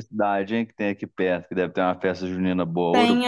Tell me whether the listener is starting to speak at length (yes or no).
yes